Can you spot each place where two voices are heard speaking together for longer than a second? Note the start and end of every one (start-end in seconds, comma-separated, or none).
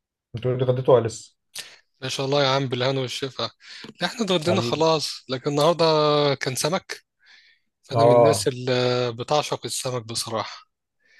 none